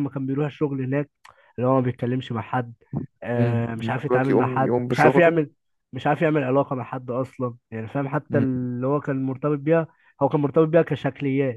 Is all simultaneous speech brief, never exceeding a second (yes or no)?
no